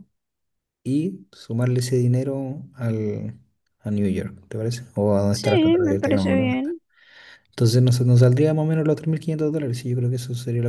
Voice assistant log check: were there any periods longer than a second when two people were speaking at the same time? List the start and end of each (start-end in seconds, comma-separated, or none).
5.3-6.8